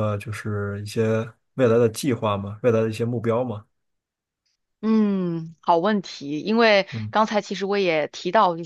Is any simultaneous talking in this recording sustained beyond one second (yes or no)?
no